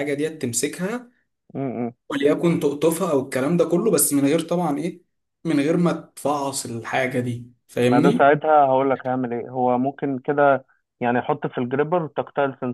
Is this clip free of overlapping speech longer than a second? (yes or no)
yes